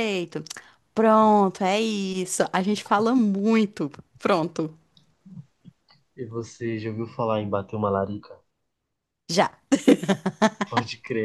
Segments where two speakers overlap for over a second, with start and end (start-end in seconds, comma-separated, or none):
none